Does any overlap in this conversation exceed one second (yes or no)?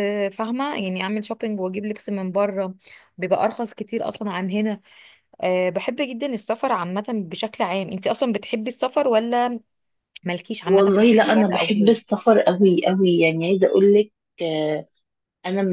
yes